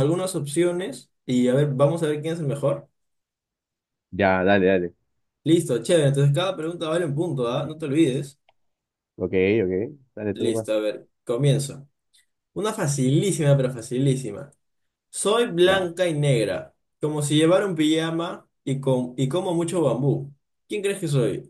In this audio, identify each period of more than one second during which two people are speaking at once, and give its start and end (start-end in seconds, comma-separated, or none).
none